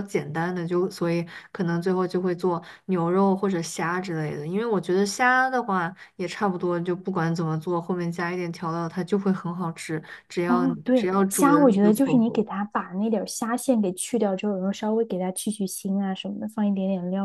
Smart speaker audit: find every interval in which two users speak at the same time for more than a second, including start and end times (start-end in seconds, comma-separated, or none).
10.5-12.4